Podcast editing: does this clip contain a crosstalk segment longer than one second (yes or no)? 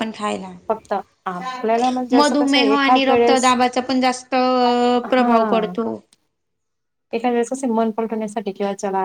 yes